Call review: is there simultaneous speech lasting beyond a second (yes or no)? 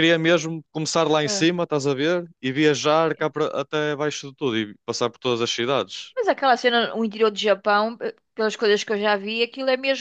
no